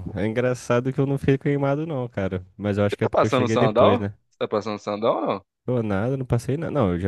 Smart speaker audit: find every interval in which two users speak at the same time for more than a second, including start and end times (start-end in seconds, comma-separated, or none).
2.9-4.1